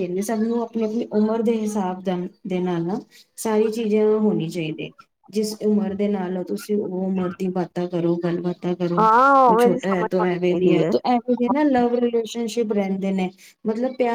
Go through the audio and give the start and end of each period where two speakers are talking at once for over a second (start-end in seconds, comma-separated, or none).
9.0-10.8